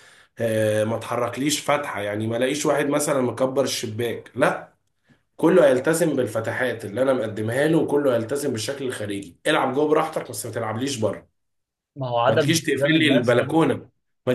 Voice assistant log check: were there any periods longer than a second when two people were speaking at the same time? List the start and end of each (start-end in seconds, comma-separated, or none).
12.3-13.5